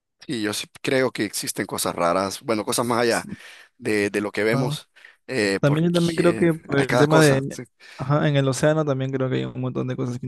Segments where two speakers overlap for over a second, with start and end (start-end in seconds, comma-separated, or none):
5.6-7.6